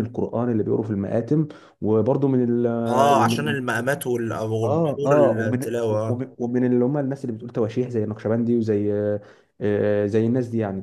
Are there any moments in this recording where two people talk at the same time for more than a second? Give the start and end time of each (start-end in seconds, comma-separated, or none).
4.6-6.2